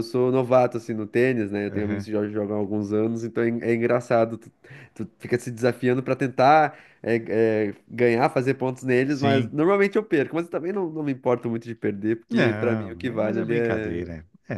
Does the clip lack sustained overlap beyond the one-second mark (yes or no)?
no